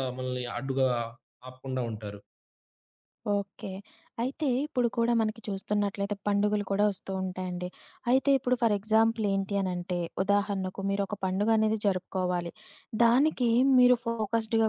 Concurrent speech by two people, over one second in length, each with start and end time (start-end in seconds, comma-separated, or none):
none